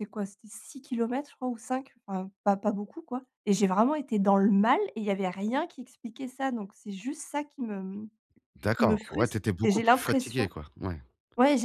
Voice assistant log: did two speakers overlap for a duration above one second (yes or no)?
yes